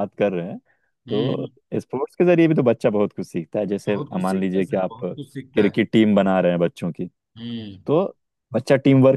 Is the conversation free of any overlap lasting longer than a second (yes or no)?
no